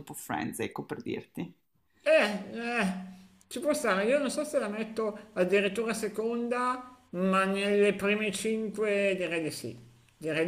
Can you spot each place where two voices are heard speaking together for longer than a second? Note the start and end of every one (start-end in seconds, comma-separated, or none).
none